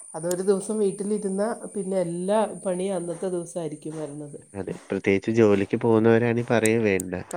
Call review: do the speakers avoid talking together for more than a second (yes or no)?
yes